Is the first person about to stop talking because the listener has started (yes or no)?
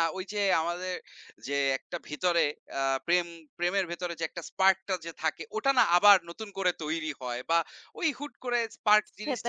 yes